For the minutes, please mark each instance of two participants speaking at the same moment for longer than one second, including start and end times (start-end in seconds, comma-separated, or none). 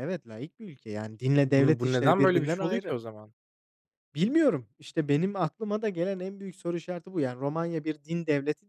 1.4-3.0